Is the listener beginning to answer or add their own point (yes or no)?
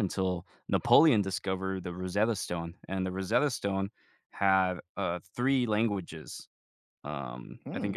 no